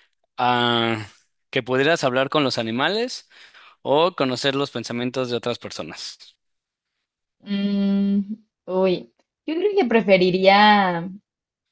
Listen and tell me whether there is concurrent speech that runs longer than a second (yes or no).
no